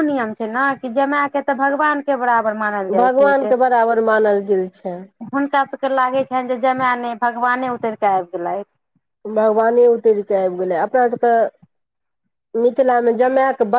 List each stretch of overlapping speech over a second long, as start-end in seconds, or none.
none